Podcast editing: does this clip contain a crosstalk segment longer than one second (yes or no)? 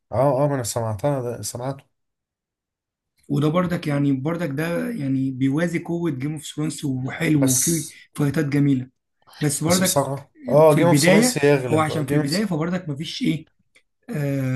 yes